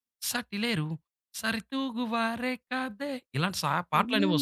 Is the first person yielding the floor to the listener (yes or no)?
yes